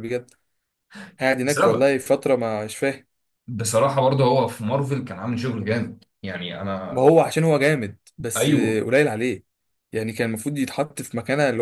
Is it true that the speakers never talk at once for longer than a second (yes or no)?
yes